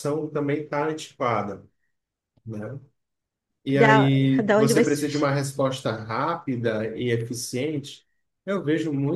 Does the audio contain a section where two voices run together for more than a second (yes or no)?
yes